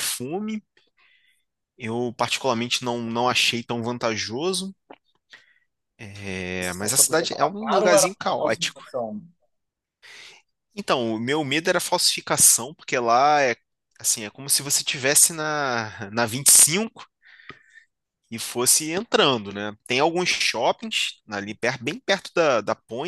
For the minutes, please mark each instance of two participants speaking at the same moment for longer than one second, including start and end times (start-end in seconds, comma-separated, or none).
6.6-8.8